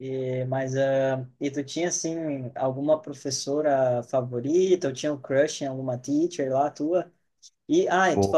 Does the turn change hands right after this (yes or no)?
no